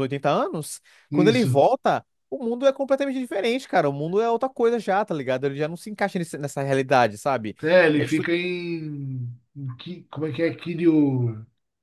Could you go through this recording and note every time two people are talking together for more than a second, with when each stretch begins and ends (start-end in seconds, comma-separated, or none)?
none